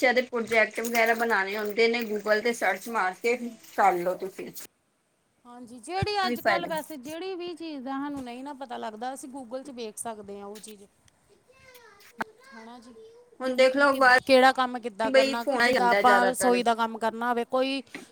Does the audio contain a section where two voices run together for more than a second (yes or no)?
yes